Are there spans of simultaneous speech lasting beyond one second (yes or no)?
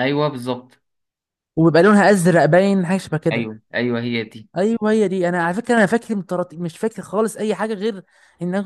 no